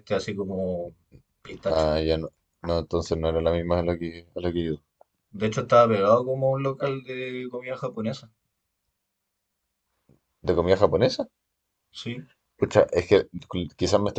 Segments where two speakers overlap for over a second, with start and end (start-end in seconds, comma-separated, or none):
none